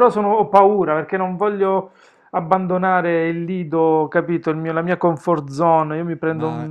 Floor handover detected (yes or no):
yes